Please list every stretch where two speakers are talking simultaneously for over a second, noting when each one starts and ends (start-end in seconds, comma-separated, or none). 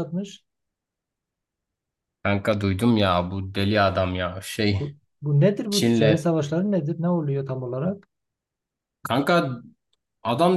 none